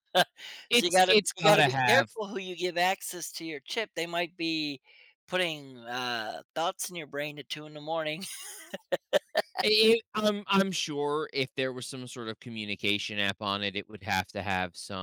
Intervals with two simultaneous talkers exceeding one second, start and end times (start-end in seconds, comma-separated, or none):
0.7-2.1